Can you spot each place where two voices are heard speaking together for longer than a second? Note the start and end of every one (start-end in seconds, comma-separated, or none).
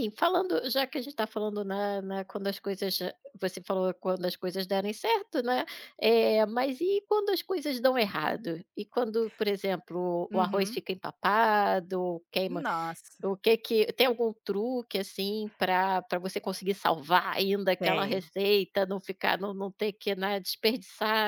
none